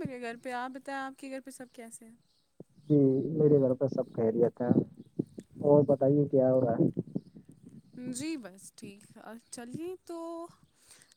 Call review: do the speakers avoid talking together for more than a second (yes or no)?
yes